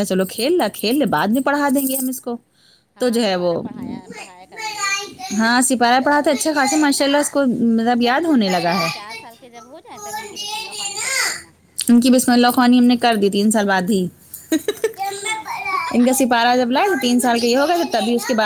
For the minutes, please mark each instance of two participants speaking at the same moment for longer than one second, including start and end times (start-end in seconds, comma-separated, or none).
none